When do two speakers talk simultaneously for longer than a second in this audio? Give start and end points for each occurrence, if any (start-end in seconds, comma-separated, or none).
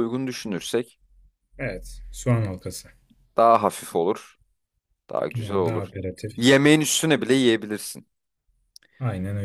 none